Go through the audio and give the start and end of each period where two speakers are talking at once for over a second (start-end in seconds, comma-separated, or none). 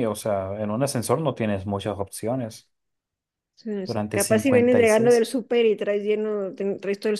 3.9-5.3